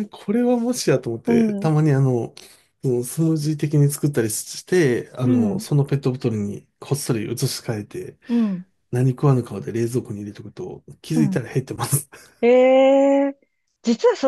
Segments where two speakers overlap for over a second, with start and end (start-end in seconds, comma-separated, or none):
none